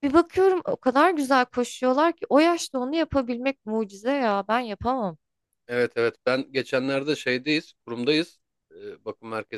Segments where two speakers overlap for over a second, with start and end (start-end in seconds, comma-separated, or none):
none